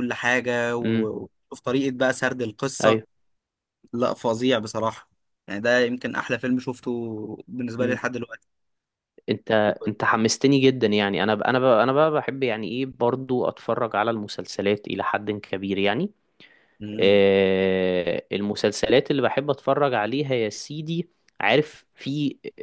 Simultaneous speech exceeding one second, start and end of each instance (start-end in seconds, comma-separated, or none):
none